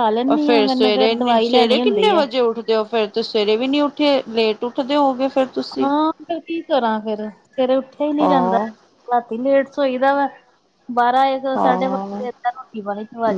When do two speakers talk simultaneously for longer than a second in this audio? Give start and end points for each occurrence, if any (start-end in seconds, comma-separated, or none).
none